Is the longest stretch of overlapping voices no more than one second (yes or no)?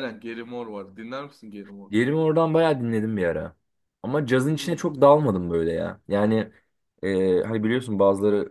yes